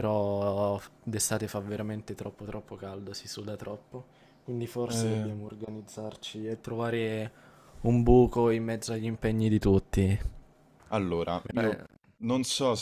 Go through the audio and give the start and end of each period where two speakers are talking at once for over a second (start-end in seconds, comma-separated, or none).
none